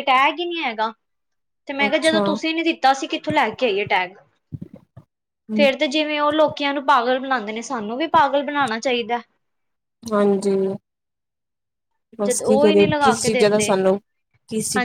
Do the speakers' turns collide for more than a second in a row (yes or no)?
yes